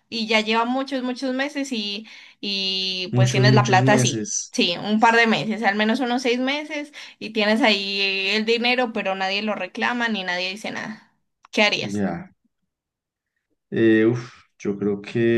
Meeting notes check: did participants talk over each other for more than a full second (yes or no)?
yes